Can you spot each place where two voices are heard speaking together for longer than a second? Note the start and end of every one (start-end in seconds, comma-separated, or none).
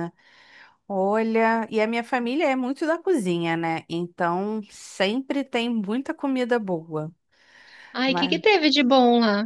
none